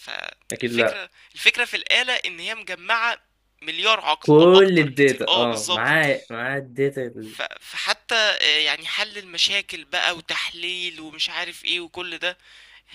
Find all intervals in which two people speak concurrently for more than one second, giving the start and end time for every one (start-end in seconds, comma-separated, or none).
4.2-6.1